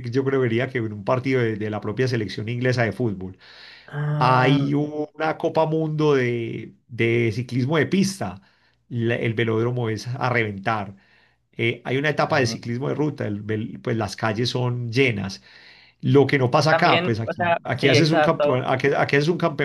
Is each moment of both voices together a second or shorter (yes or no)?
no